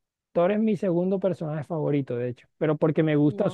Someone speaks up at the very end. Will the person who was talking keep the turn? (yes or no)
yes